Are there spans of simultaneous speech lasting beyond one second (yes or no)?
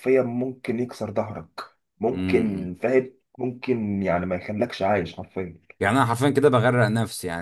no